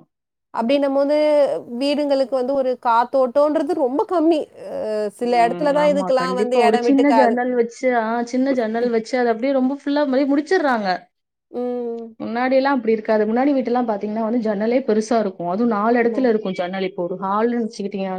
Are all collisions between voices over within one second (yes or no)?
no